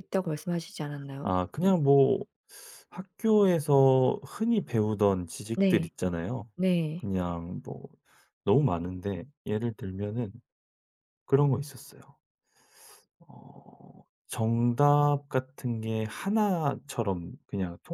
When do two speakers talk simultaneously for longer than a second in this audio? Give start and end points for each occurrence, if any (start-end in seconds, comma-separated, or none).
none